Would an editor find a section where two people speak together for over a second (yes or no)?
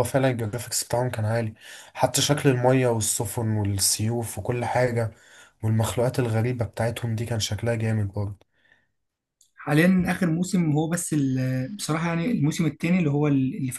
no